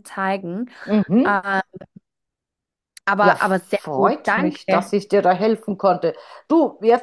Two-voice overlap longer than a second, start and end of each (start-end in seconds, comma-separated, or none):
3.2-4.9